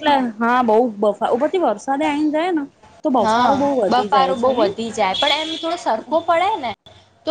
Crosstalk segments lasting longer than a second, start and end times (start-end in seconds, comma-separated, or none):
3.2-4.7